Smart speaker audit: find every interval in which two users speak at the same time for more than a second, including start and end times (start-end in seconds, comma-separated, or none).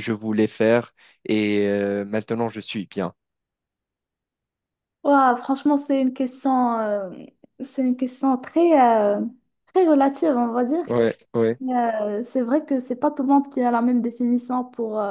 none